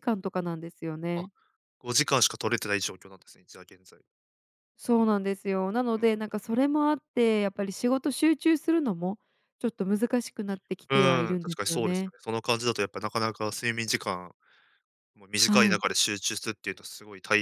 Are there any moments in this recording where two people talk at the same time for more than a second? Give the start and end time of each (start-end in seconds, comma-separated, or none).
10.9-12.1